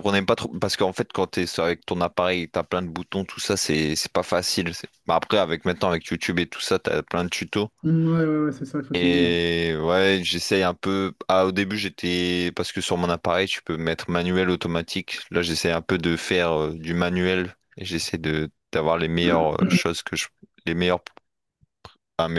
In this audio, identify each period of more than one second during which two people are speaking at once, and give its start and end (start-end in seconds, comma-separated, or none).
none